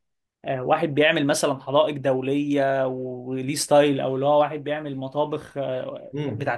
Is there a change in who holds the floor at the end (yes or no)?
yes